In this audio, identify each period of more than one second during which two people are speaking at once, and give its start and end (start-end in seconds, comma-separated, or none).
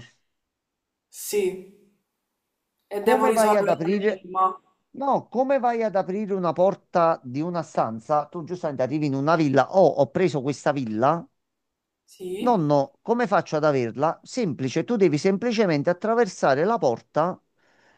3.0-4.3